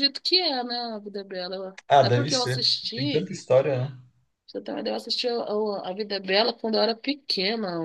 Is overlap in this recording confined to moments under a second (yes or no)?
no